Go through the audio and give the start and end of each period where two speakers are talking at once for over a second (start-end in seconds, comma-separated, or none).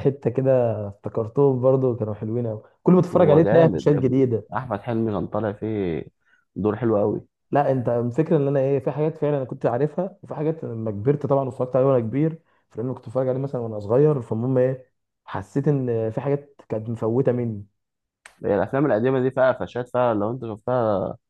3.1-4.5